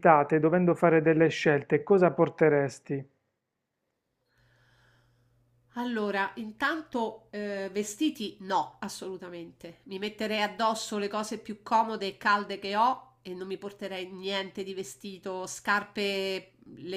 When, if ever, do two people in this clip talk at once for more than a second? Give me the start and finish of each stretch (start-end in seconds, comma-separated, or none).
none